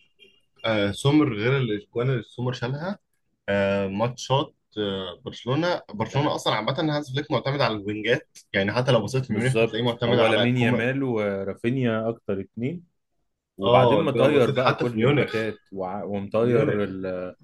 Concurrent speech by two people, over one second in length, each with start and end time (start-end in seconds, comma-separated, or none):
9.3-10.9, 13.6-15.3